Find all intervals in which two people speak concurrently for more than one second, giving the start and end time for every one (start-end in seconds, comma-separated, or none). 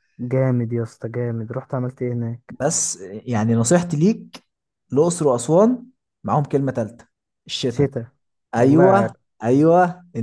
none